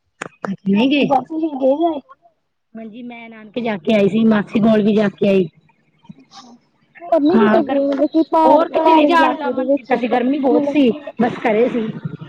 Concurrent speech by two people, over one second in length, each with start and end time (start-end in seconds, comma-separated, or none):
8.4-10.8